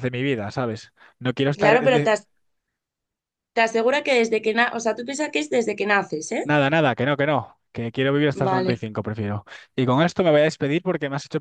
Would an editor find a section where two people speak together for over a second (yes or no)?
no